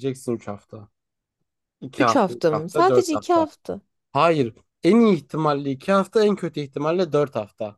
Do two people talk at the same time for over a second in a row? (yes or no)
yes